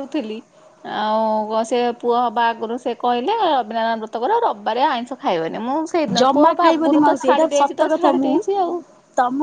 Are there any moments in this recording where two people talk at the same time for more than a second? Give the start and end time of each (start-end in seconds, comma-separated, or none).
6.2-8.3